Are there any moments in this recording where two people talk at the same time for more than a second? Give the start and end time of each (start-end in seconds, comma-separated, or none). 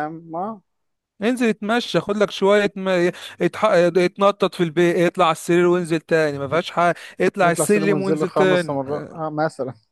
7.4-8.8